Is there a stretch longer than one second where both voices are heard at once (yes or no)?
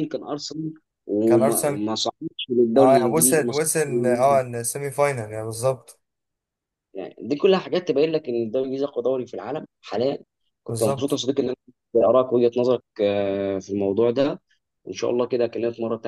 yes